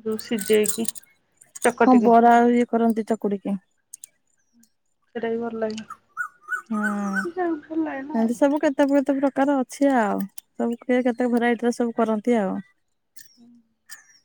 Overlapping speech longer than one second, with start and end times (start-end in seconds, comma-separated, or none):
6.9-8.3